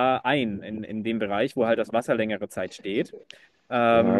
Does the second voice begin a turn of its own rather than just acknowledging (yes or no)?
yes